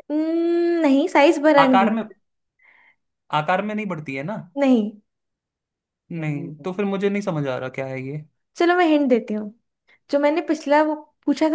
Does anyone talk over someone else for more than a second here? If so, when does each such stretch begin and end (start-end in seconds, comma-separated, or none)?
none